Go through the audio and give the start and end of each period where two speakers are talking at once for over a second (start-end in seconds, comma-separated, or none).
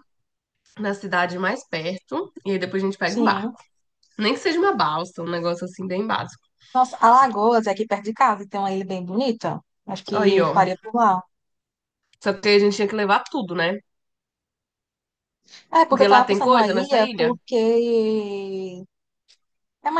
15.9-17.3